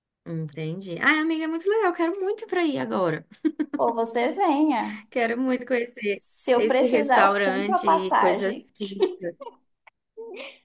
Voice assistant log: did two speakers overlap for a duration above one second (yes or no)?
yes